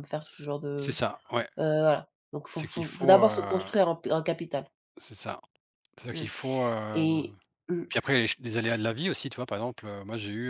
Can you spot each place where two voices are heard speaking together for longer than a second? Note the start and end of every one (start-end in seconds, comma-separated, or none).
2.5-3.7